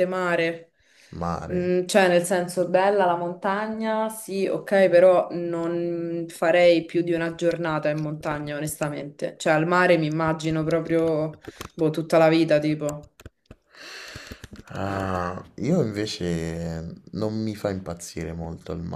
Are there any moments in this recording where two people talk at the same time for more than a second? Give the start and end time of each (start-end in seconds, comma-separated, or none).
none